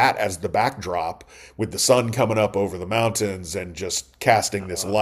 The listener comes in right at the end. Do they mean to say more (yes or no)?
no